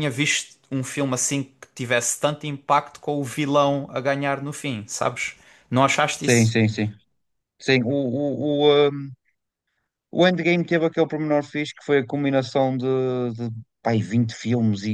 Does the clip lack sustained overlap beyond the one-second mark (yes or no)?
yes